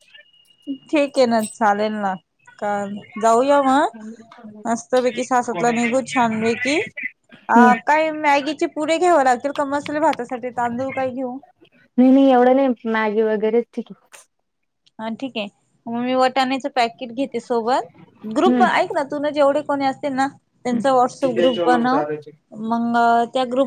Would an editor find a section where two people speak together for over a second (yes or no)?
no